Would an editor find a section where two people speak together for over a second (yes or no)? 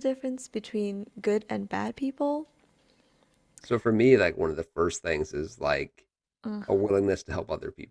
no